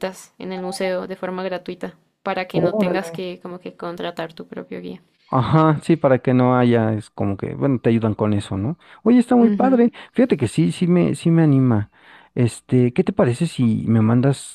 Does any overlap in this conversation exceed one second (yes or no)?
no